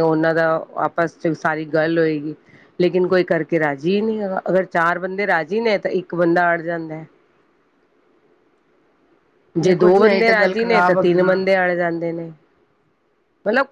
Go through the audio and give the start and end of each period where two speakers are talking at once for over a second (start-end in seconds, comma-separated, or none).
9.6-11.3